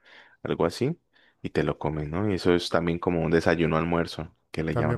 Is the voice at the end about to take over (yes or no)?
yes